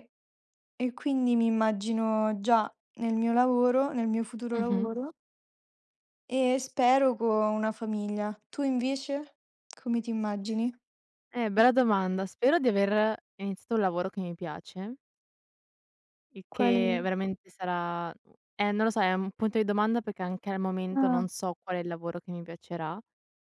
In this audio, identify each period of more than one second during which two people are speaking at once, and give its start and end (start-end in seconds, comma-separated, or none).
none